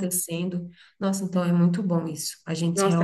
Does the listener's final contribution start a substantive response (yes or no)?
yes